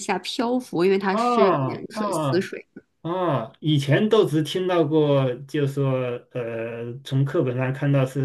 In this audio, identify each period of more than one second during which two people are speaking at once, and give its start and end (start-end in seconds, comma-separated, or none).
1.1-2.5